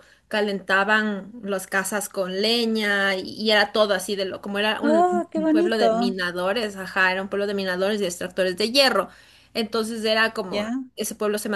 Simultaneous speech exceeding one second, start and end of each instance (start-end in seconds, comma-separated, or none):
4.8-6.2